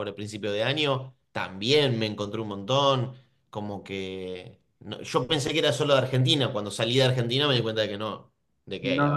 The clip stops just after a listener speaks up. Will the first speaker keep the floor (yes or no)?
no